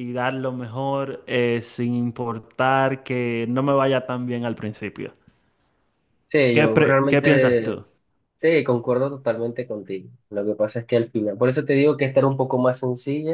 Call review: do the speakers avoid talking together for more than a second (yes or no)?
no